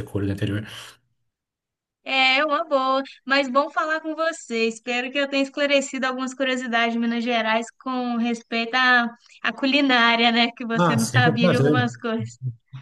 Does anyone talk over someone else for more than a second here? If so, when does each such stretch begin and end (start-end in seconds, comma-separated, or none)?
10.8-12.1